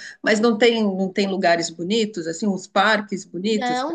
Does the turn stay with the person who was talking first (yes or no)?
no